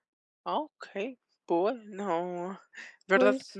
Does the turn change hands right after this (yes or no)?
no